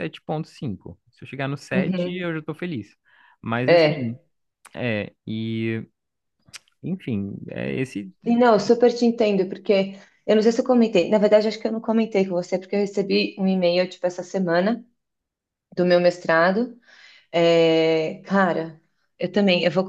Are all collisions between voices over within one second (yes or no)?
yes